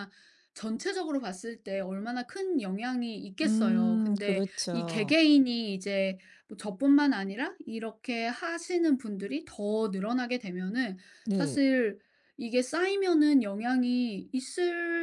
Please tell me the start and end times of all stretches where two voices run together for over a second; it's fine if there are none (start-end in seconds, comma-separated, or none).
3.4-5.2